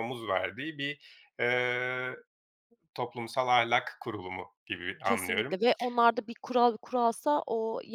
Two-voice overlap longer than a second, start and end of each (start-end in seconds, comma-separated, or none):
none